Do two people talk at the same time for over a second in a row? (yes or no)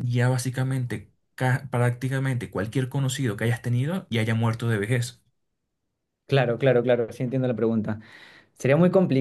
no